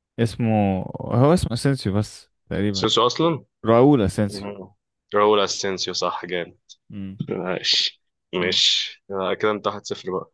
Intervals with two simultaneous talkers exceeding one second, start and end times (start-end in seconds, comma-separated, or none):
none